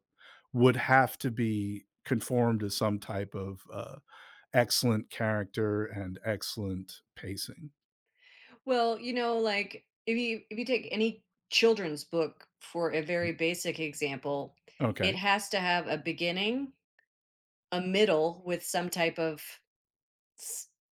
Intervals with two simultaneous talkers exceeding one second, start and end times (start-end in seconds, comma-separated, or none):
none